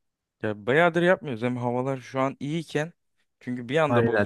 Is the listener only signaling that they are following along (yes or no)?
yes